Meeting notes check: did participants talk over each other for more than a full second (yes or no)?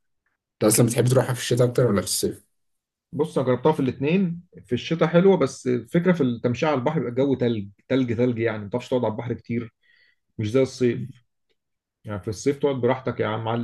no